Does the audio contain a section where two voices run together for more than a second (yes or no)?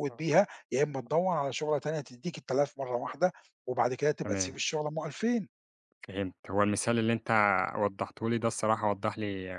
no